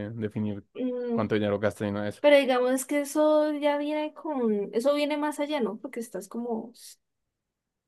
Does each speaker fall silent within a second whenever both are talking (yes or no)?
yes